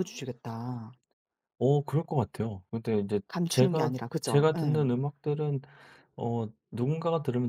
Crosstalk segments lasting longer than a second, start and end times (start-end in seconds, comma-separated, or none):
3.3-4.9